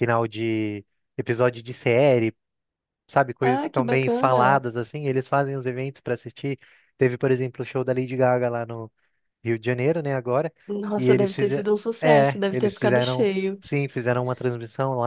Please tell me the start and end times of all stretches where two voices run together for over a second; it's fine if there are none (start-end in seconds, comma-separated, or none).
3.4-4.6, 10.9-13.6